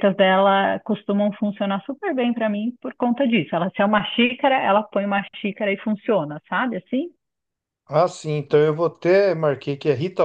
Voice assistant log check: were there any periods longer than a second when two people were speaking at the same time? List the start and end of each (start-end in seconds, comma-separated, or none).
none